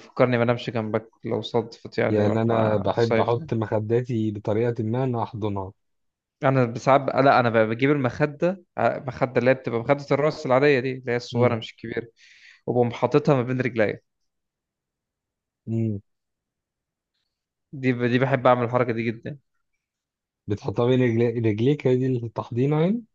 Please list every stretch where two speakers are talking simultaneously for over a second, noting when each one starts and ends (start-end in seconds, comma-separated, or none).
2.1-3.5